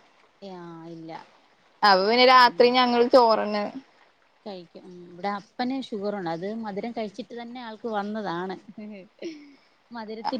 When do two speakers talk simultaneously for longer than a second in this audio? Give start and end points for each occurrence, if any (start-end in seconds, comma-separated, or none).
none